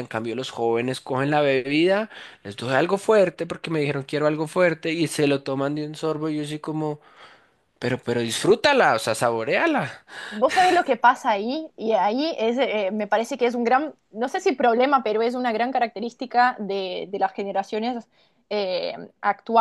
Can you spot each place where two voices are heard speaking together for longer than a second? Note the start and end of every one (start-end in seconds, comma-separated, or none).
none